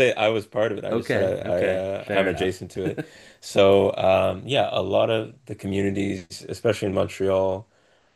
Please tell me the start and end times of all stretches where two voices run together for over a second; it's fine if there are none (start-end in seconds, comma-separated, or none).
0.9-2.5